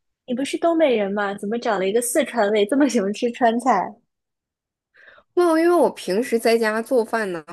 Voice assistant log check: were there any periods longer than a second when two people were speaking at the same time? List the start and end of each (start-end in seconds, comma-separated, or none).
none